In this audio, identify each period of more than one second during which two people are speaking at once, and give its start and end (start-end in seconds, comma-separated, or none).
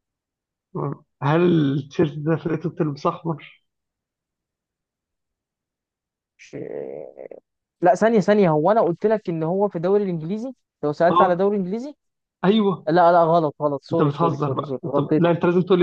13.9-15.2